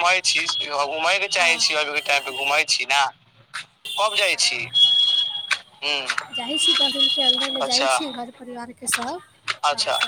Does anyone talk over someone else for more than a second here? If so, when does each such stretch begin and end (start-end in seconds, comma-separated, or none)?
none